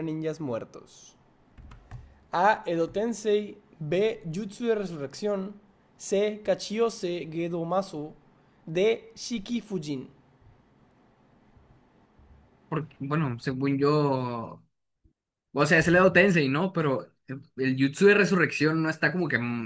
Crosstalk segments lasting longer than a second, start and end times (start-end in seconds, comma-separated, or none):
none